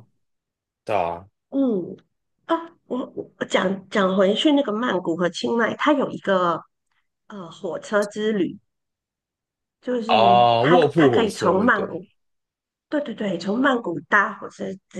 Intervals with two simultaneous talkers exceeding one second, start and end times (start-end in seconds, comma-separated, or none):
10.1-12.0